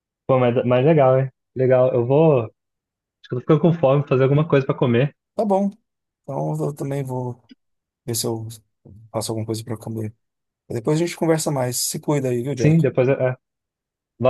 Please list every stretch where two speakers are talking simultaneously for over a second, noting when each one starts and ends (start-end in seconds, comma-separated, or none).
none